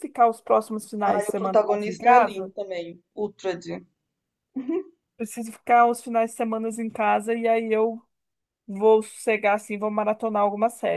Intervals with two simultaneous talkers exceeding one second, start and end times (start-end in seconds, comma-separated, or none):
1.1-2.5